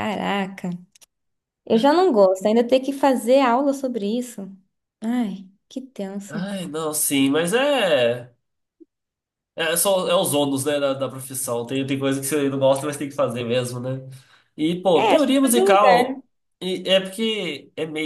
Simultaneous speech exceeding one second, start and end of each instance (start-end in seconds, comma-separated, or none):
15.0-16.2